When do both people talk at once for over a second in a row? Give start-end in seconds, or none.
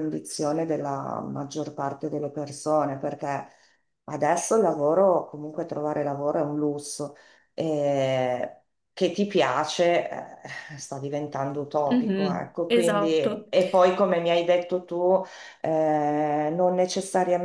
11.9-13.5